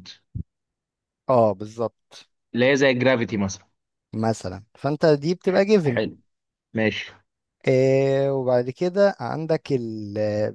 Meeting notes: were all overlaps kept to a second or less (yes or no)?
yes